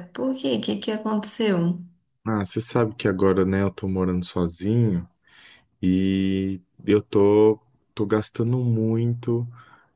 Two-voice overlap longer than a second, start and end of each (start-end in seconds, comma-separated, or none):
none